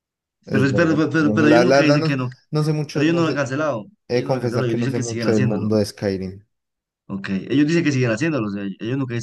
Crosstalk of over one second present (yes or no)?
yes